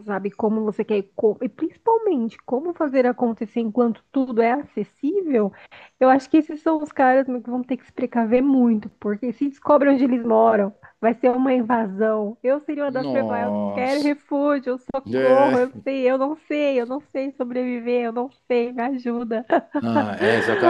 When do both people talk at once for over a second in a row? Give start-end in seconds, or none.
12.9-14.2